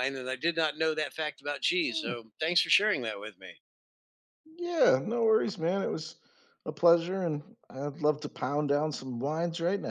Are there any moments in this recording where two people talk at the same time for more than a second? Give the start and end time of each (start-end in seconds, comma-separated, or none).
none